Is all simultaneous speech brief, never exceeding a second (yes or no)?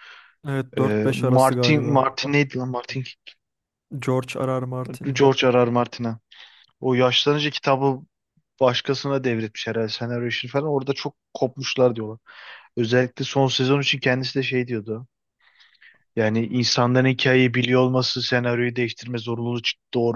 no